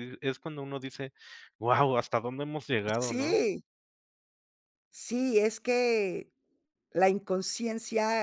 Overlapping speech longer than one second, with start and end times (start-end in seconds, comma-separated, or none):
none